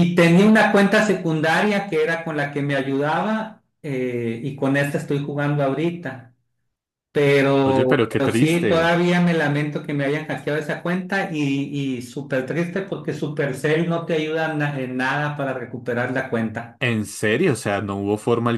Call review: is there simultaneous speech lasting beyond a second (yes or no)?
yes